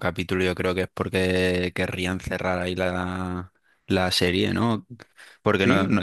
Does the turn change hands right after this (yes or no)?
no